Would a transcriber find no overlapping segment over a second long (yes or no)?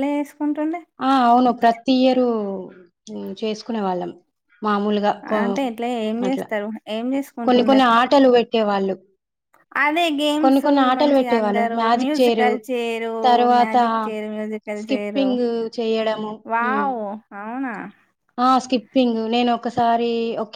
no